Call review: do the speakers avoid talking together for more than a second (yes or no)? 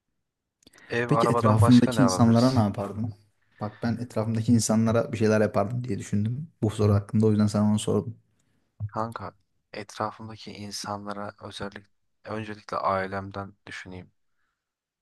no